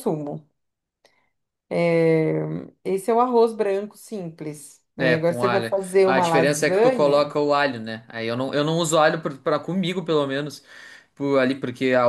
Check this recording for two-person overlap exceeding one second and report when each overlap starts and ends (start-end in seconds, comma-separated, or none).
5.0-7.3